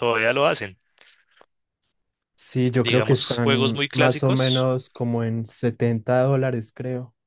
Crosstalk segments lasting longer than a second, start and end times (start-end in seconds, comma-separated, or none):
2.8-4.7